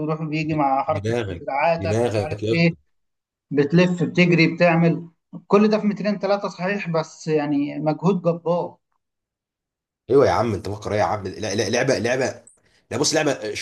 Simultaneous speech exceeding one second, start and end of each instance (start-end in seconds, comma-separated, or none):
0.9-2.7